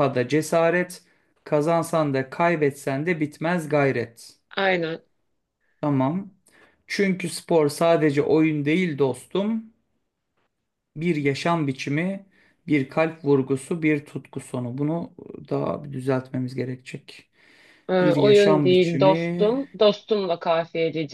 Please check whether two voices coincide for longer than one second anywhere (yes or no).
yes